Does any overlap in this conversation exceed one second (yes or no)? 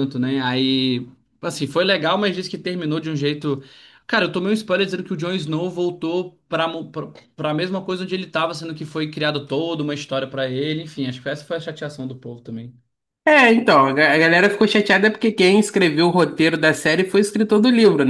no